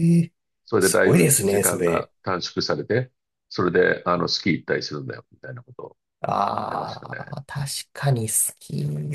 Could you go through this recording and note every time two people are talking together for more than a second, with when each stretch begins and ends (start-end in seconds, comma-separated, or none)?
0.8-2.1